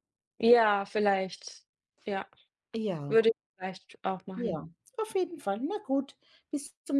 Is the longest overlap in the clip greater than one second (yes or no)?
no